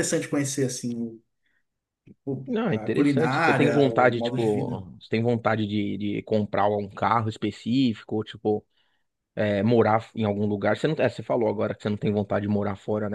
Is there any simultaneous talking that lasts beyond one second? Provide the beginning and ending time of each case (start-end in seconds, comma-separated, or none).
2.5-4.8